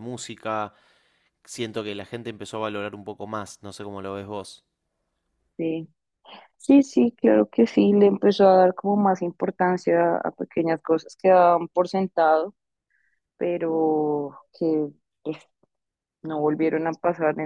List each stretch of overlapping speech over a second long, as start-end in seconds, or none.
none